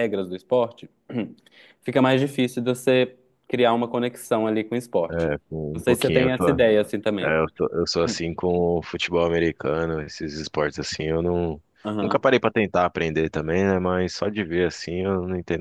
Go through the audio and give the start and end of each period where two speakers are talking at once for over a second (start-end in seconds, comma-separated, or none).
none